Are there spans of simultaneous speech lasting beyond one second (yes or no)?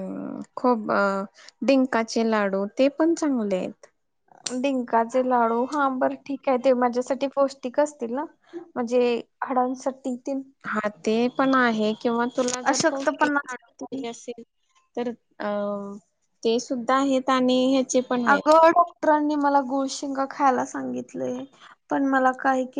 yes